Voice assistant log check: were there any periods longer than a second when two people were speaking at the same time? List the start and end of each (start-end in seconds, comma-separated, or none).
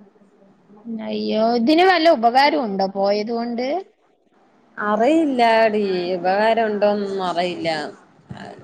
none